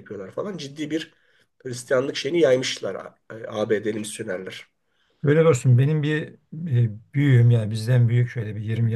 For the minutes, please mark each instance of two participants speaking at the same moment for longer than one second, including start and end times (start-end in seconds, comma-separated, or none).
none